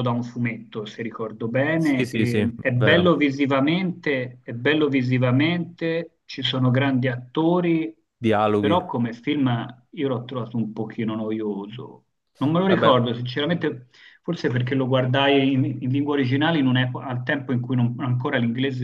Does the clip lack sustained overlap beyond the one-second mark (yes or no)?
no